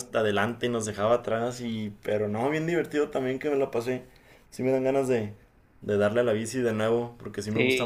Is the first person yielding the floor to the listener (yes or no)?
yes